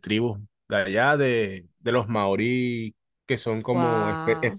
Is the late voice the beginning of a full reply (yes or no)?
no